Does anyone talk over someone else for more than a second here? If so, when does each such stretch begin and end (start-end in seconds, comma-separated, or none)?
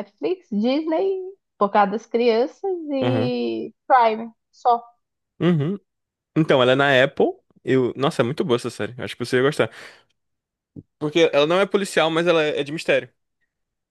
none